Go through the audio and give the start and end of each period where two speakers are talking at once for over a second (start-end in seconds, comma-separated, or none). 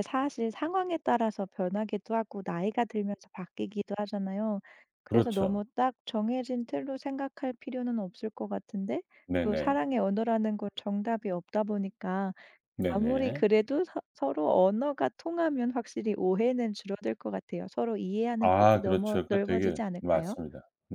18.4-20.4